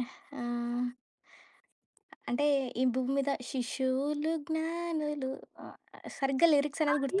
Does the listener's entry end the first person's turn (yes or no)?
yes